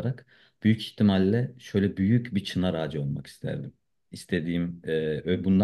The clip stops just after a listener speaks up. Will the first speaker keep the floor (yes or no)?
yes